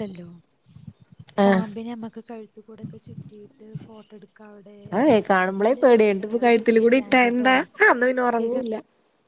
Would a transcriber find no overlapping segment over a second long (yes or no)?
no